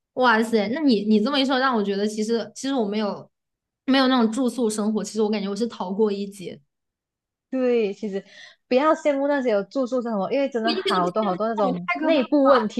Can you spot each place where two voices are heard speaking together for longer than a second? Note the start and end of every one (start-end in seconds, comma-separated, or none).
10.6-12.3